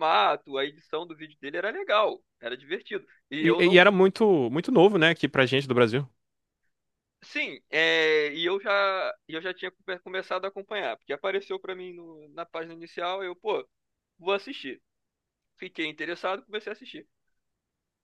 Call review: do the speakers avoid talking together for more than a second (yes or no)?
yes